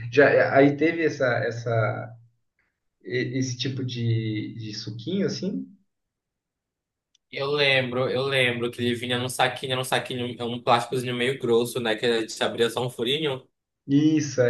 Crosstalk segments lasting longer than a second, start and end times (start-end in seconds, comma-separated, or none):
none